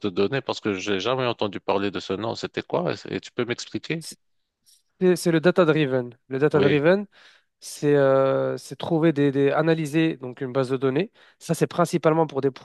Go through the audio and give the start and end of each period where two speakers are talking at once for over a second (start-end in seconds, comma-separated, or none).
none